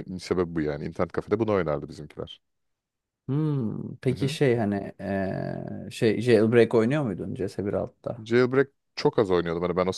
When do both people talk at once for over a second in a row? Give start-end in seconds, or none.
none